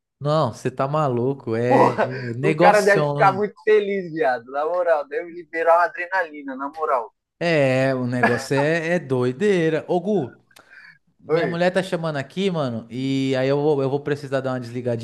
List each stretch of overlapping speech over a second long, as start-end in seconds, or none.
1.7-3.4